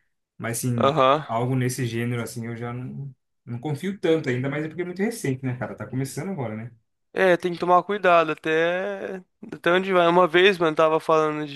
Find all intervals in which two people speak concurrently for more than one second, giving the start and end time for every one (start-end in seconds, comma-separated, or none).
none